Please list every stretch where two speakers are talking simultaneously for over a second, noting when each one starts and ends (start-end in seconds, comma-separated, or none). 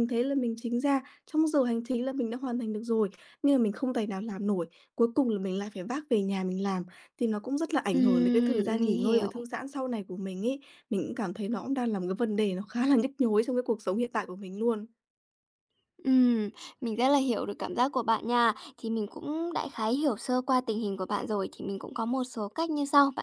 7.9-9.3